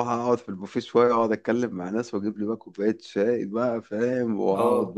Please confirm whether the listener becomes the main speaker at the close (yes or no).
no